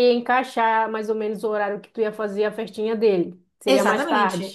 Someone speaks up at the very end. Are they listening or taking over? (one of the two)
taking over